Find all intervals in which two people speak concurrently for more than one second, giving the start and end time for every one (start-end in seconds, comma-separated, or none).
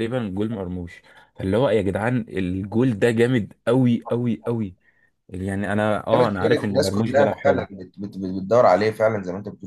6.1-7.7